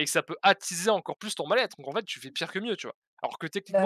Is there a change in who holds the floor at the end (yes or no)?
no